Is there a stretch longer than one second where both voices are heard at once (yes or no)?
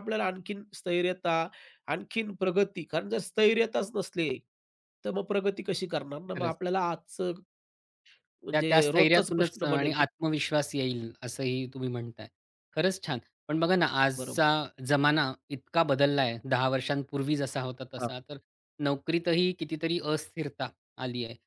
yes